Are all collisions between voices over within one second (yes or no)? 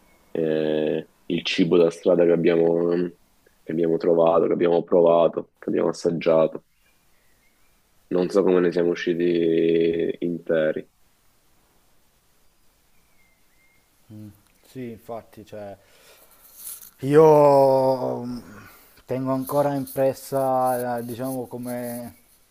yes